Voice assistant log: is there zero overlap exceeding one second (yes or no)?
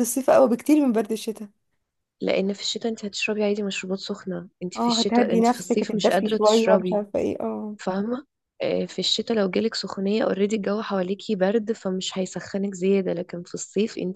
no